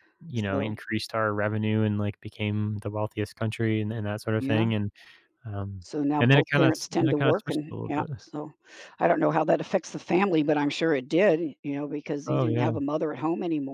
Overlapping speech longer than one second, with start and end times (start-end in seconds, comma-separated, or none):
5.8-8.1